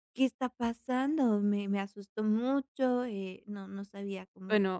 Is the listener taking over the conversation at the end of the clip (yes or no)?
yes